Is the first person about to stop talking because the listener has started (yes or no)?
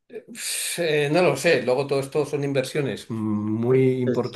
no